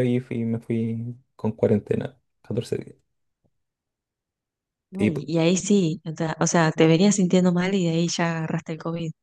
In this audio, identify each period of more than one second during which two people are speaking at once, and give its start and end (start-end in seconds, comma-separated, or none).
none